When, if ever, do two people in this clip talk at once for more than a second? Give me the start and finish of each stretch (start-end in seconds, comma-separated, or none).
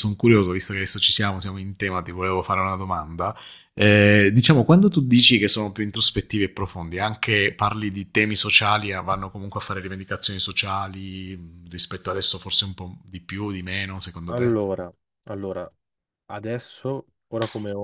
none